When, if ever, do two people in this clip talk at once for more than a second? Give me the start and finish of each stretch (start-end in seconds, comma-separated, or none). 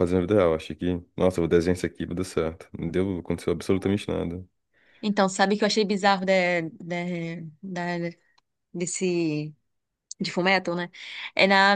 none